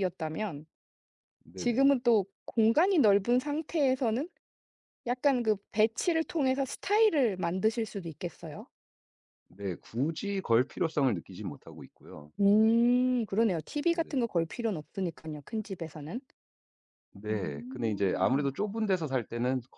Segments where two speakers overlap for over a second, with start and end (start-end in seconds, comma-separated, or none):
17.3-18.5